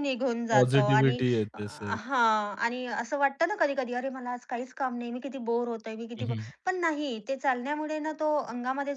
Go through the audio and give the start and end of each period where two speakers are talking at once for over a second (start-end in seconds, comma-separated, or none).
0.5-2.0